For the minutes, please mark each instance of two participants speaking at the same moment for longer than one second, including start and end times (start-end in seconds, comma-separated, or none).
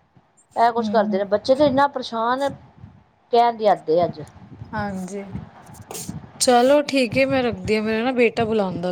none